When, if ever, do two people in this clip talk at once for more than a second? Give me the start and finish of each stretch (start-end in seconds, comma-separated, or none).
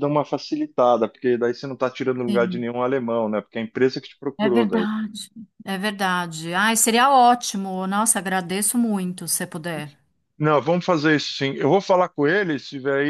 none